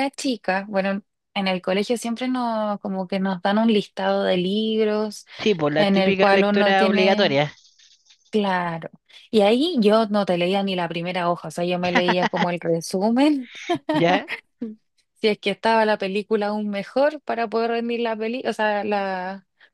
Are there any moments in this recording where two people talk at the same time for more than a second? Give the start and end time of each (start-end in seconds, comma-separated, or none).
5.8-7.4